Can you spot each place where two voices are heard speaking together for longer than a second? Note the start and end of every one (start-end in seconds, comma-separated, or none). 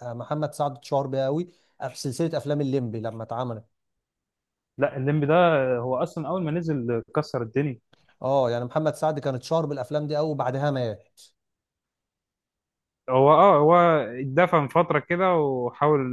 none